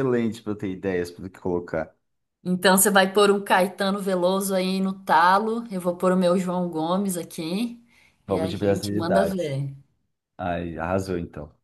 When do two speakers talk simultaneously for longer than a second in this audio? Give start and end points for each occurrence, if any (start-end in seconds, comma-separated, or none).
8.3-9.6